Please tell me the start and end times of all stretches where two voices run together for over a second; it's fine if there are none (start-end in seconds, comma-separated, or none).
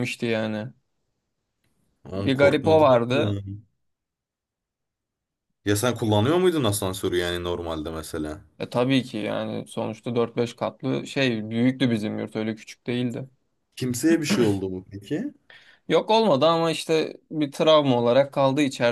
2.1-3.4